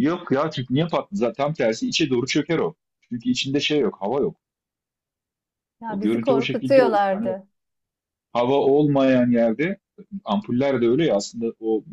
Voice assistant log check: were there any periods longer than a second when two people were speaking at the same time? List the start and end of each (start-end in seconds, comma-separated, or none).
5.9-7.3